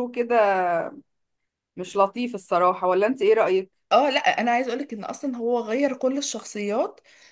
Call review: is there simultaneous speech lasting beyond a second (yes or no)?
no